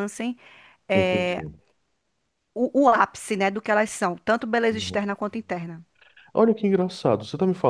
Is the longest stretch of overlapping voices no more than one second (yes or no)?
yes